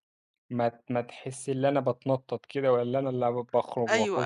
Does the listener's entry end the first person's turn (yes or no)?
yes